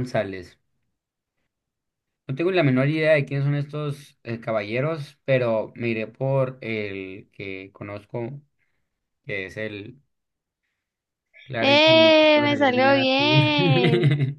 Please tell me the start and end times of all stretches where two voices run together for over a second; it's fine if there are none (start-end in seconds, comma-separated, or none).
11.6-13.4